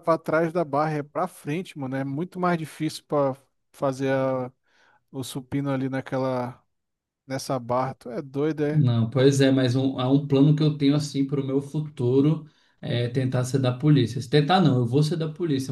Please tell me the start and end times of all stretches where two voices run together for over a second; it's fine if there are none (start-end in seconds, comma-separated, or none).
none